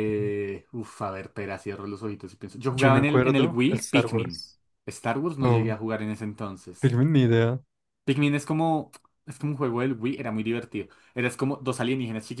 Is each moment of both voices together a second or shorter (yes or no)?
no